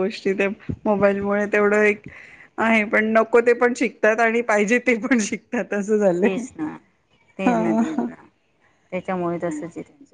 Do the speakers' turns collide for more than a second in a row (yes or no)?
no